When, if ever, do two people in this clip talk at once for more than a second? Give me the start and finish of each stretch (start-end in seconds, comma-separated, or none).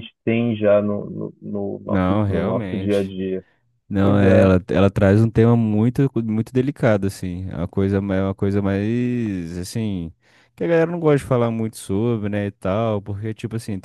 1.8-3.1